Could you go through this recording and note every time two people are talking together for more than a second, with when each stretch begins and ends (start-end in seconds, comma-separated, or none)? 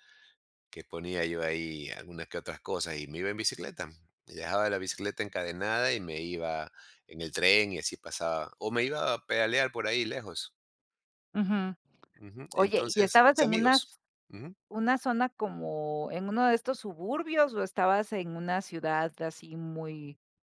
12.5-13.9